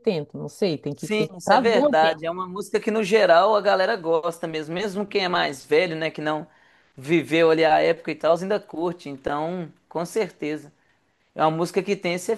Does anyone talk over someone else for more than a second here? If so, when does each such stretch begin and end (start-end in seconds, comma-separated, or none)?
0.9-2.3